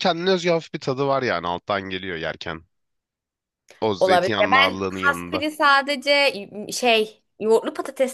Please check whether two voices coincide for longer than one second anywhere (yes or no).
yes